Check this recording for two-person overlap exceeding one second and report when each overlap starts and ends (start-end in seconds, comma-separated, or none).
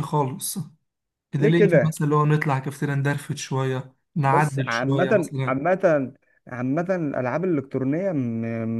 4.3-5.6